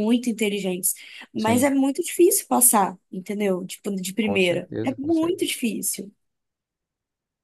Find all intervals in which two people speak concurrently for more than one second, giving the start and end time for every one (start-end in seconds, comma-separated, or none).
4.2-5.4